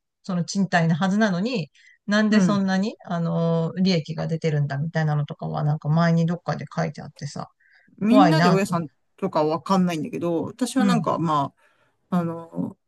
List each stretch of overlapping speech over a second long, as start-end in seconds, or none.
none